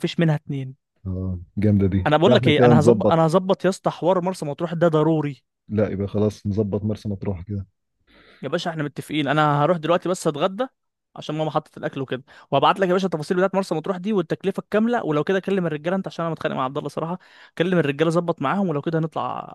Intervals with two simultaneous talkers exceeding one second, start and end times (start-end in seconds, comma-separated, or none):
2.1-3.3